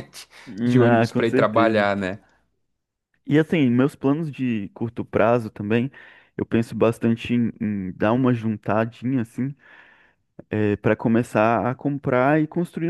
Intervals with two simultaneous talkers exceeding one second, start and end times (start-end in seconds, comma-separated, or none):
0.6-1.9